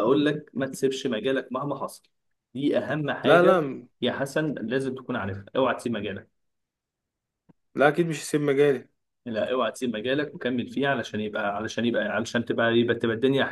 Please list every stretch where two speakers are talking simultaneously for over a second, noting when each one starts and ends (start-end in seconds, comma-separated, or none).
none